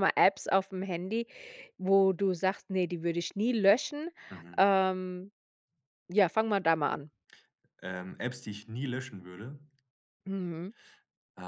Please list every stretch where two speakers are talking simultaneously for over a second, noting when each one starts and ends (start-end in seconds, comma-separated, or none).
none